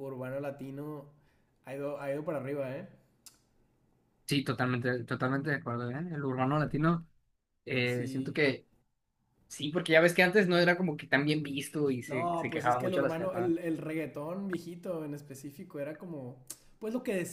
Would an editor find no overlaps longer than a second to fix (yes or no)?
no